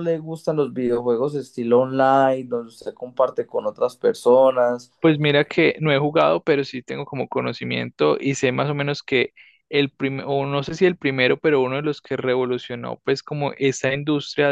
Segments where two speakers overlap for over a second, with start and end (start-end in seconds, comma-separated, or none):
none